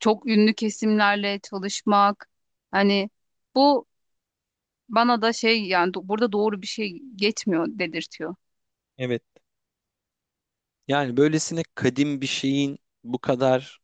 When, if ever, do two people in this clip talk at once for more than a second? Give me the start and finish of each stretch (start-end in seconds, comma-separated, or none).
none